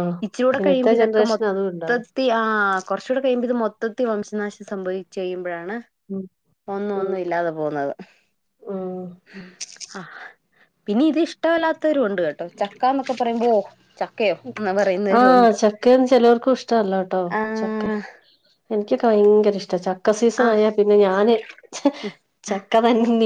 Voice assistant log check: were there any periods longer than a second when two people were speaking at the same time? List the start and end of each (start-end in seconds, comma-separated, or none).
0.6-2.0